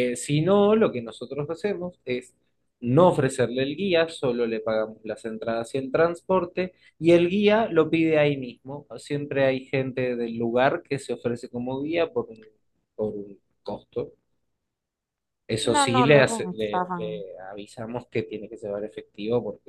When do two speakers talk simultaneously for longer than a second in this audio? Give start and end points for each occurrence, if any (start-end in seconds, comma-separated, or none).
15.6-17.2